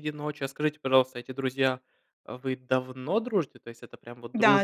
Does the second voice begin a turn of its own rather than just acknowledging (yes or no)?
yes